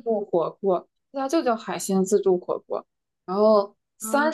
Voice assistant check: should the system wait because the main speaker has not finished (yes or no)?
yes